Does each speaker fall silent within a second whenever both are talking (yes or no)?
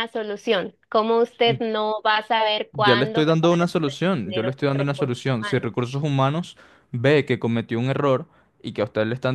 no